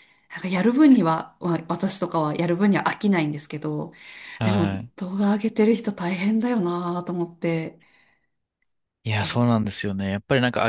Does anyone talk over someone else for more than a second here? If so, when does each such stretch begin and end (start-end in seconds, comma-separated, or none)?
none